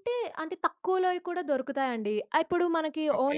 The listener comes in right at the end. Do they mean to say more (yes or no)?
no